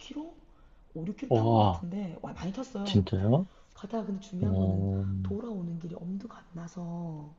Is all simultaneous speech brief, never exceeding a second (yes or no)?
yes